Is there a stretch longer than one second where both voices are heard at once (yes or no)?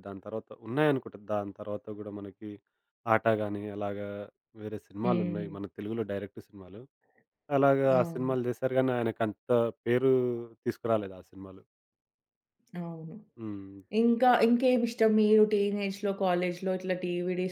no